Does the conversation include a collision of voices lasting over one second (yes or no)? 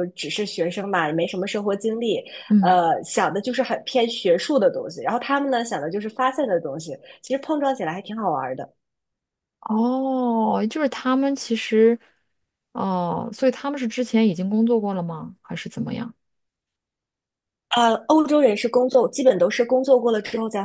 no